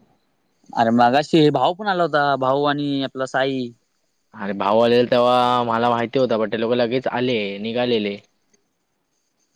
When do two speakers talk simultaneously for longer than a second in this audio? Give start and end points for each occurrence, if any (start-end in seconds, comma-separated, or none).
none